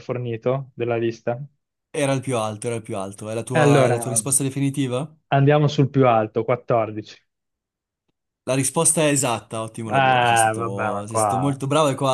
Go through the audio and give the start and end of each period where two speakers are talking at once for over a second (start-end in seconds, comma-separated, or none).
9.9-11.6